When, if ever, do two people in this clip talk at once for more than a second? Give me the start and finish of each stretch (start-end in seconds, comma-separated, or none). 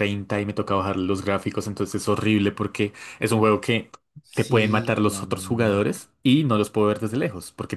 4.3-5.8